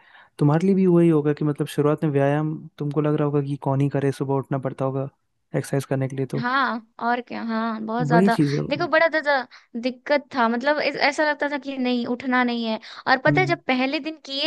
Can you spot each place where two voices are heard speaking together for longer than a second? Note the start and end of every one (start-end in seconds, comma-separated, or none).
none